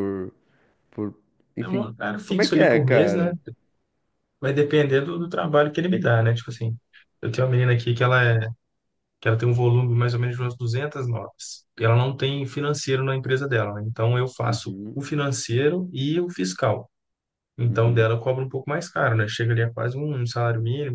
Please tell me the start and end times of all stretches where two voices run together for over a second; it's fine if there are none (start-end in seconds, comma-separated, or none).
1.6-3.3